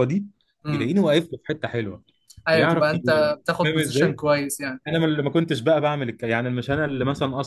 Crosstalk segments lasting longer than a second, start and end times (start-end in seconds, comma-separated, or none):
2.5-4.2